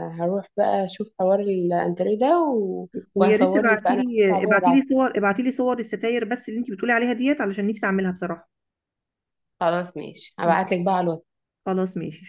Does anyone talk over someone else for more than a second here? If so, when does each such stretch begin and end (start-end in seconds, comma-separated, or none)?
3.1-4.8